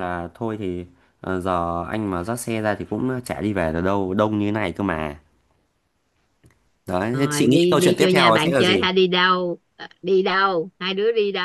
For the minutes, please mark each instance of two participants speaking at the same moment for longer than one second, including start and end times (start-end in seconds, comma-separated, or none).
7.1-8.8